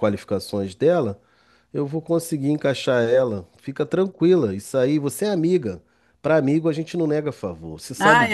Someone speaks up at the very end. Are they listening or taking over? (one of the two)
taking over